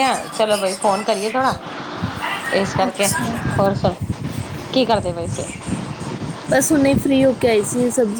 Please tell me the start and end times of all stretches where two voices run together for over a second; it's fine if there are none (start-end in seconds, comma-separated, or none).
none